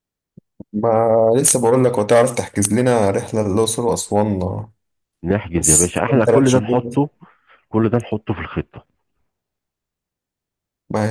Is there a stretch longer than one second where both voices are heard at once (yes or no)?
yes